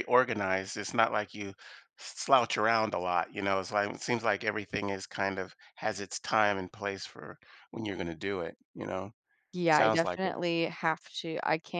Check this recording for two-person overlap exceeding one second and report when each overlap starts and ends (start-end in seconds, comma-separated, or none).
none